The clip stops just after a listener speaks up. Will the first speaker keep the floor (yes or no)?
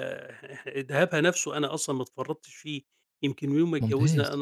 yes